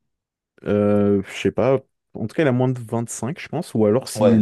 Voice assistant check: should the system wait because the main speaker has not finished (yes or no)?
yes